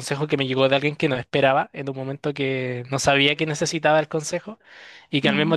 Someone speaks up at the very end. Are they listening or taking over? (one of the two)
listening